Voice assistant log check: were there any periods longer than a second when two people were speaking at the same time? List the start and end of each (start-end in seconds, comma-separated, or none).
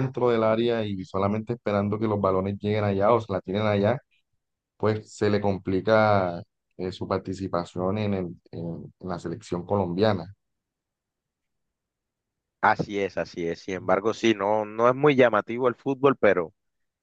none